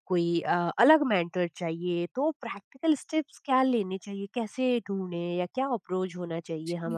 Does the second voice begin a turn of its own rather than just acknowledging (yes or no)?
yes